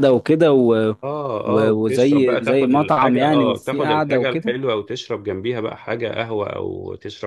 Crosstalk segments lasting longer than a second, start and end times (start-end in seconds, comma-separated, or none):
1.4-4.5